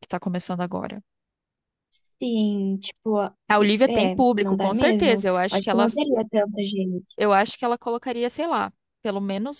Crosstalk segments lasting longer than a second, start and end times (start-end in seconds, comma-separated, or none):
3.9-5.9